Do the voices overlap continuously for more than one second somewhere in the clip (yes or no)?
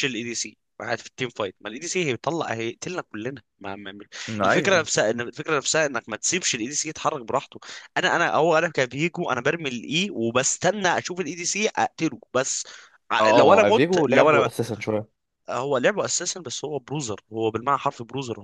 yes